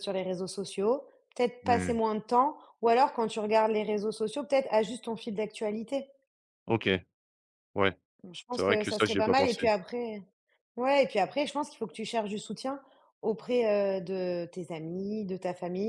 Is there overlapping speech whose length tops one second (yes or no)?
yes